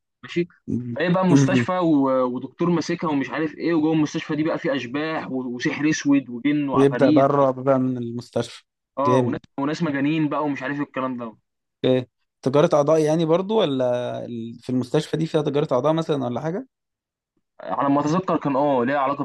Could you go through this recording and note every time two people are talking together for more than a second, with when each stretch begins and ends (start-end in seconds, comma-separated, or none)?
none